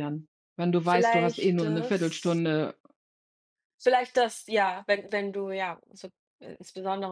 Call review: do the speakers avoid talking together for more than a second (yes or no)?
no